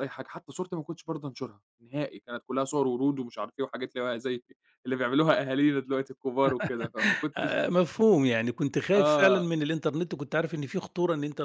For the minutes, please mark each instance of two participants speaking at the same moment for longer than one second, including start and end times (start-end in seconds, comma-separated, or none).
none